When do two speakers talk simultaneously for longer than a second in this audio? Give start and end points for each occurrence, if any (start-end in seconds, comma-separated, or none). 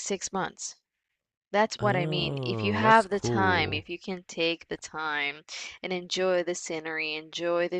1.8-3.8